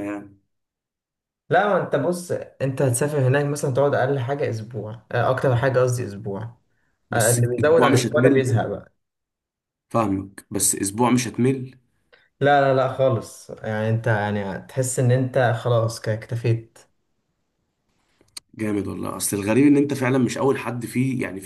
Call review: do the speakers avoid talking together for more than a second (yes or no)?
no